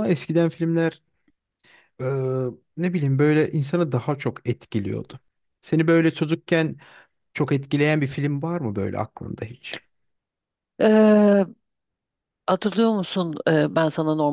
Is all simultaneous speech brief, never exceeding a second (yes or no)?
yes